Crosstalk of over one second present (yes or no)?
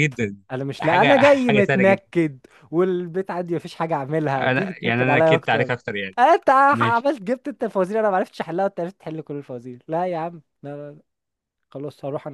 yes